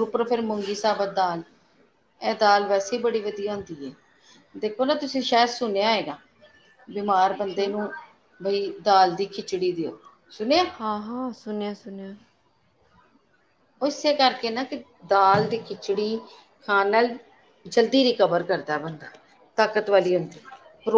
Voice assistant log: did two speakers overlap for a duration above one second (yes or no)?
no